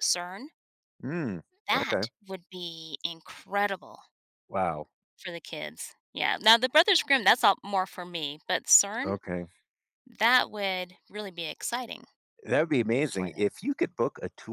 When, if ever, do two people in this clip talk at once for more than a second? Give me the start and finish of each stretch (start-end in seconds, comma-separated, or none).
none